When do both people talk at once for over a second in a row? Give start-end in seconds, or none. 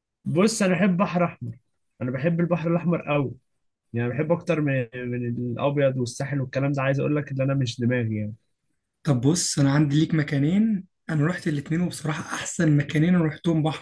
none